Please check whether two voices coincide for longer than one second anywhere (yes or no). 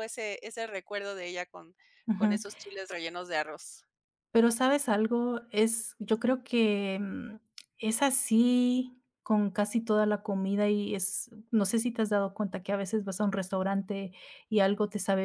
no